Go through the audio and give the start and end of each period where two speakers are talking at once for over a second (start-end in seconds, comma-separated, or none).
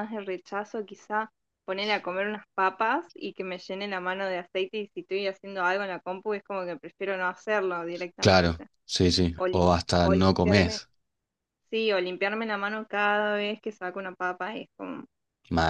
9.3-10.8